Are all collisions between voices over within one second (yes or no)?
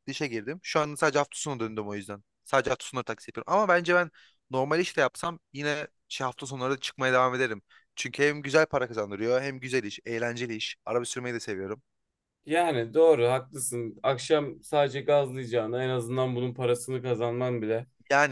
yes